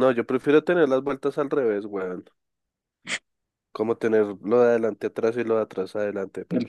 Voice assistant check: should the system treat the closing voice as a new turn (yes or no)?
yes